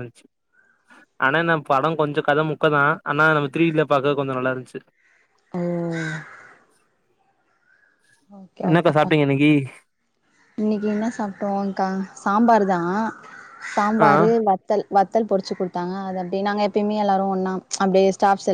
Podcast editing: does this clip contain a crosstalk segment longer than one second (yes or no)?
no